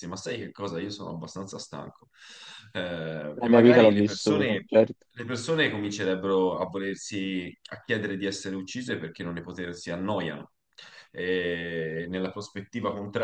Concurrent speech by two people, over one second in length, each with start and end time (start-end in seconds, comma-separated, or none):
3.4-4.7